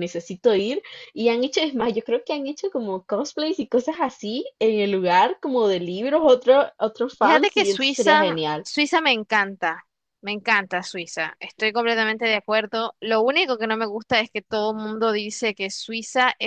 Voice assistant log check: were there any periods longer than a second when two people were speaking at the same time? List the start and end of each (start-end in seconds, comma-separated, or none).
7.2-8.7